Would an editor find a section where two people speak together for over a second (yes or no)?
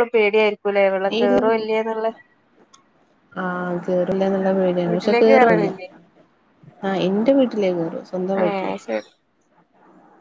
no